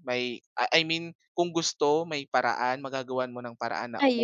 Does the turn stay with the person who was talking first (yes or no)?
yes